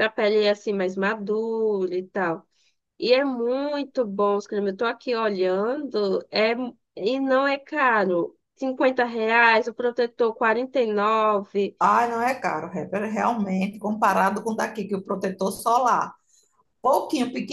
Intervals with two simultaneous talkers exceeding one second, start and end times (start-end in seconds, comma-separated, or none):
none